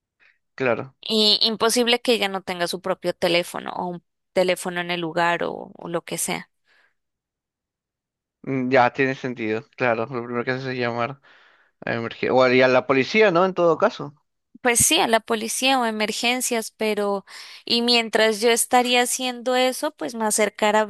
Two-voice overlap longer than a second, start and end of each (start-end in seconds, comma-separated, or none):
none